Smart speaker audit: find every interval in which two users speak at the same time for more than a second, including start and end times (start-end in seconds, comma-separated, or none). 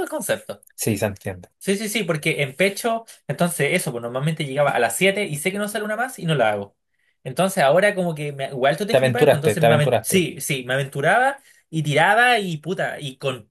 8.9-10.3